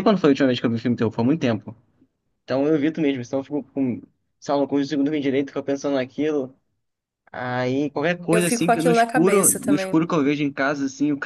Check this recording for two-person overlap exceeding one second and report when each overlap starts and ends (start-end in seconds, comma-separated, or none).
8.3-10.0